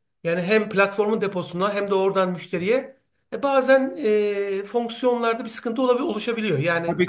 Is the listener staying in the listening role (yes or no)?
no